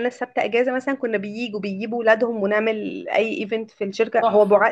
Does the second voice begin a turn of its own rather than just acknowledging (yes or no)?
no